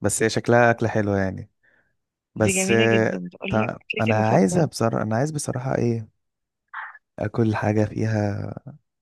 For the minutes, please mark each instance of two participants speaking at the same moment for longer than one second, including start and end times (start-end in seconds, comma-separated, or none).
2.4-4.7